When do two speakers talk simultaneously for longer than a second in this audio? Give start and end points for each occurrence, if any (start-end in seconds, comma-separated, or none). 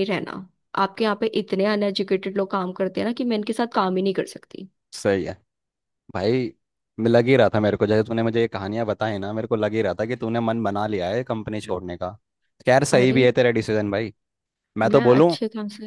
none